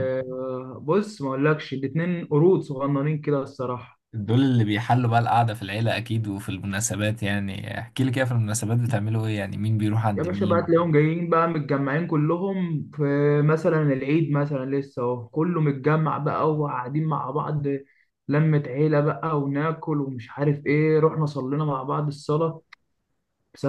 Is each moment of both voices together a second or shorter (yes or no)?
yes